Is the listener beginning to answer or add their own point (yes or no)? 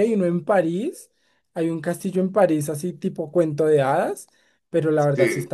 no